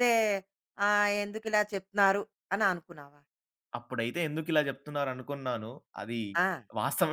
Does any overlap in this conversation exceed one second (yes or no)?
no